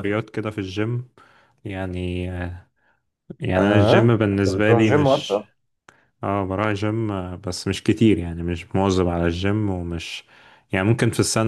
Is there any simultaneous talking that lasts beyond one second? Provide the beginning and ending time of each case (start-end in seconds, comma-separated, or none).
3.6-5.4